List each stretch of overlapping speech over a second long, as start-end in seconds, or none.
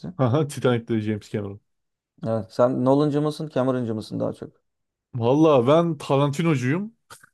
none